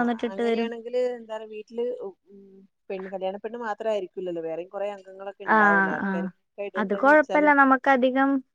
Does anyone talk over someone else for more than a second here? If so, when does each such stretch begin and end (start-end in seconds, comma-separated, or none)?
none